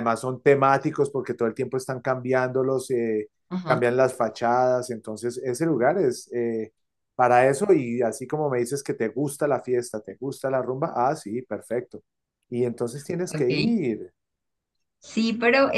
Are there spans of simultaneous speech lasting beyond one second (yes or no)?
no